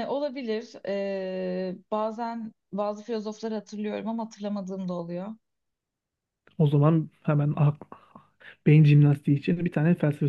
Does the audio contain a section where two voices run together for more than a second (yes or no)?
no